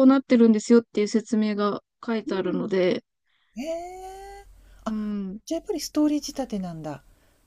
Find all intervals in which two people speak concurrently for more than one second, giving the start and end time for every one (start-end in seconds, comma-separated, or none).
none